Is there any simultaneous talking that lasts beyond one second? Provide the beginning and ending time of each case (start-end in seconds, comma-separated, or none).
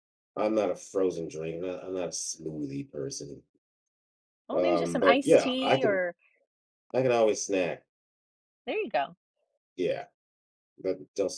4.5-6.0